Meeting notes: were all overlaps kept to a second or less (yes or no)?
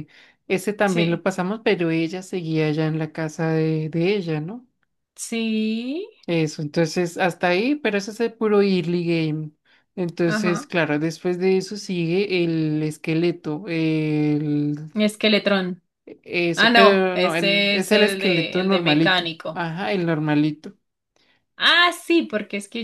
no